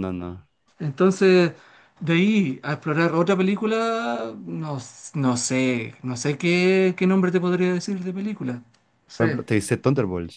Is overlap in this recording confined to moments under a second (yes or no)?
yes